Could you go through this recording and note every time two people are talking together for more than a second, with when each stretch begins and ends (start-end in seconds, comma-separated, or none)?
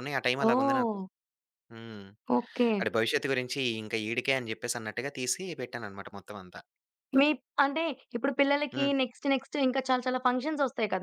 none